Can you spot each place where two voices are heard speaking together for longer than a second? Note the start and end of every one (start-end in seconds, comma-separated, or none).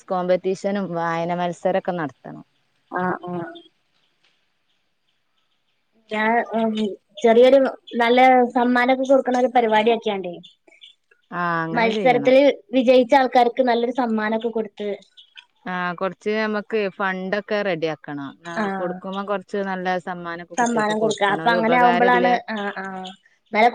20.6-22.3